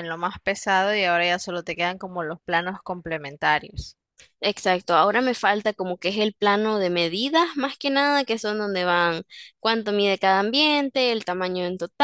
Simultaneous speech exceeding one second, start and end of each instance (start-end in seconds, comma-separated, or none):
none